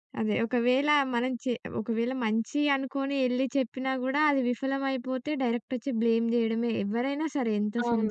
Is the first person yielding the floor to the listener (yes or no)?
yes